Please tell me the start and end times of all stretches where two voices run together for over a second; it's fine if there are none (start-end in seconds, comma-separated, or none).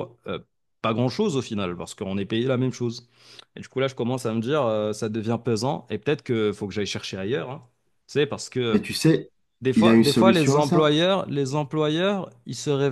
9.7-10.9